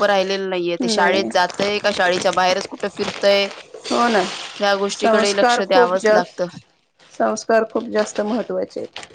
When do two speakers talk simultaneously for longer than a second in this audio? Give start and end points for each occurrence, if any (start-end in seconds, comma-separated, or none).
5.0-6.4